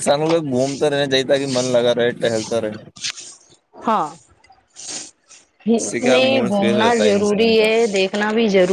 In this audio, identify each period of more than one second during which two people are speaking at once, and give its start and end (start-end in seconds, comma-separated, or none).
5.7-7.6